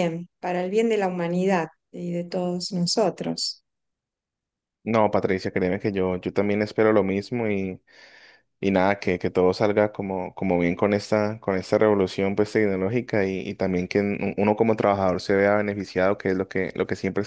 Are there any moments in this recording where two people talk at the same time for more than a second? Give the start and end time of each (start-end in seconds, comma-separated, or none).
none